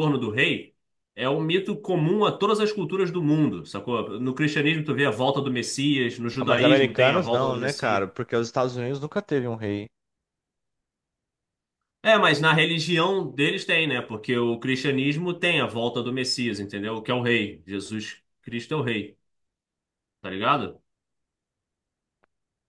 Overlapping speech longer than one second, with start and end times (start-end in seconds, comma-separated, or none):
6.4-8.1